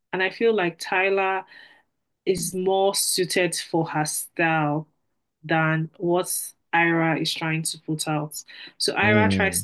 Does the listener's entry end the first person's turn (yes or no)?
no